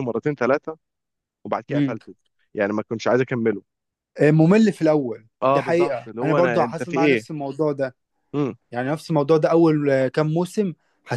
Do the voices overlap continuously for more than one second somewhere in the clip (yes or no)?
yes